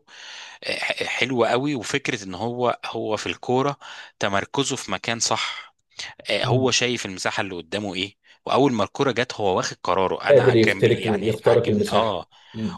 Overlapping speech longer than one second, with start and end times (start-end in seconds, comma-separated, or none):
10.3-12.2